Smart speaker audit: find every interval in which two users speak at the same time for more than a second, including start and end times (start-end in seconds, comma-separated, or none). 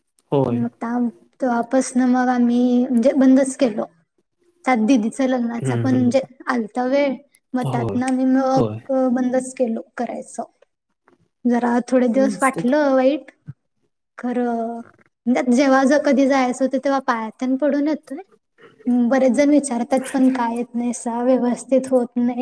none